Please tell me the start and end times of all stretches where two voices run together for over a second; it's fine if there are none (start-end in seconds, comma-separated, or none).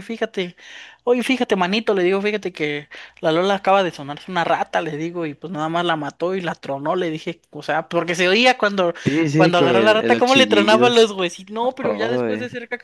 9.3-11.1